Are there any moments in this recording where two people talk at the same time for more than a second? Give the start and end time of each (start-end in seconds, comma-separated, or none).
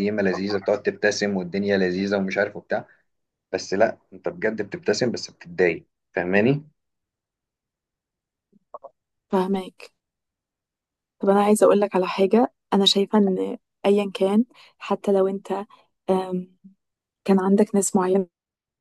none